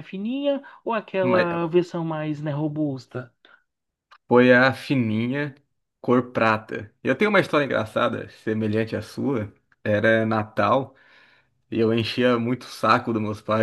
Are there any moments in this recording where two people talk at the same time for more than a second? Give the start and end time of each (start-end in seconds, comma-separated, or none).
none